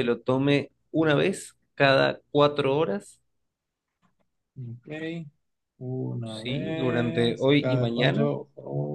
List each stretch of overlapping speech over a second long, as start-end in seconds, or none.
6.2-8.3